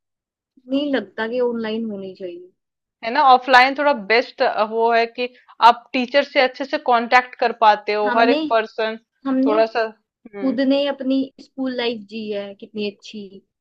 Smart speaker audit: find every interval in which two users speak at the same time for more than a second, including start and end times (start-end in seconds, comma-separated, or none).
none